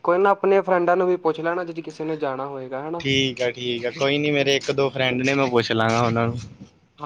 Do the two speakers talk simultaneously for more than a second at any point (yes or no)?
no